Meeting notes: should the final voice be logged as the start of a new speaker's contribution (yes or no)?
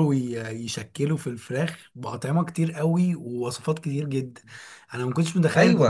no